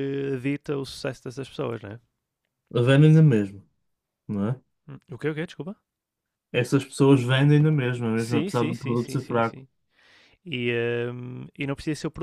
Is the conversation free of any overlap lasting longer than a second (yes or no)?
no